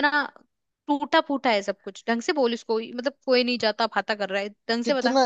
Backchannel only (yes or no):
no